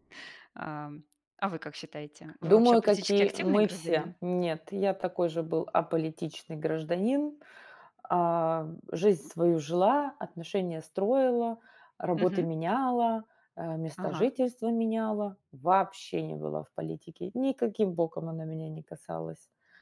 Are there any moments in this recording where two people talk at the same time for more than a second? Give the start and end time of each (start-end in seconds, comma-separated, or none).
2.4-4.2